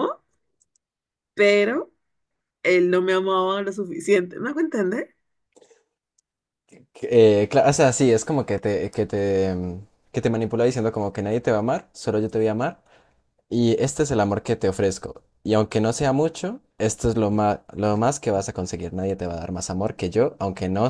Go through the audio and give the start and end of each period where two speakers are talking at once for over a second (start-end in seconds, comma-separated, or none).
none